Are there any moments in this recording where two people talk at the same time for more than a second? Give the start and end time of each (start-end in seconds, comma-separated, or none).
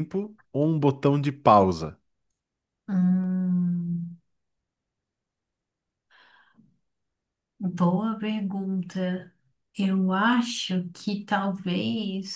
none